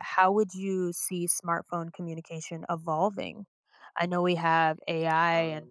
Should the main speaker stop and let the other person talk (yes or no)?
no